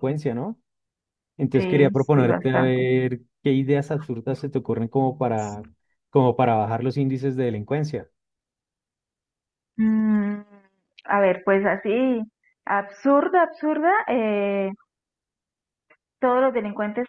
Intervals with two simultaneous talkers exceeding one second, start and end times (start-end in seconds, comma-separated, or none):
1.6-2.9